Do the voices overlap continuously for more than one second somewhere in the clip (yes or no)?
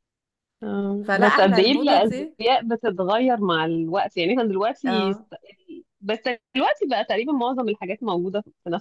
yes